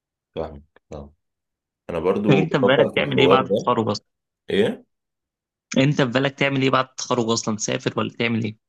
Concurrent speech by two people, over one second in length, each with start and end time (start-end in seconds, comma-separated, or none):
2.3-3.7